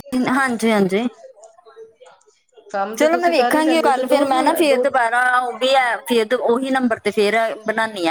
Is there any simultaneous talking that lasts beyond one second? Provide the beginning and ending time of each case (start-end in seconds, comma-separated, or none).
3.0-4.8